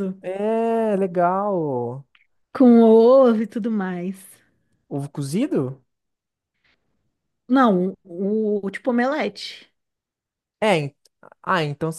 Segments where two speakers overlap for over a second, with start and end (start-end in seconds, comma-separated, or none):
none